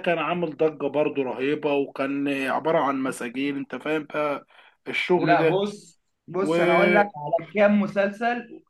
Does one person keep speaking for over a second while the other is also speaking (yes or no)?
no